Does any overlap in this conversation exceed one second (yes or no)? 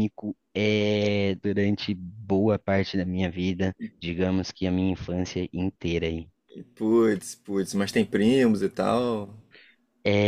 no